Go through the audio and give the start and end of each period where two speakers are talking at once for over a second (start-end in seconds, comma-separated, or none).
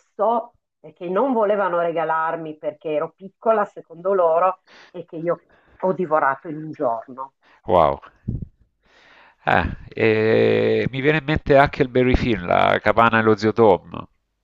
none